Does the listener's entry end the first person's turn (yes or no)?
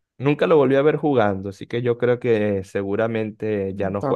yes